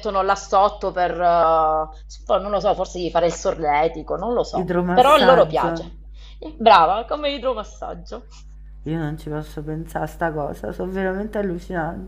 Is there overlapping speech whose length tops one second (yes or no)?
yes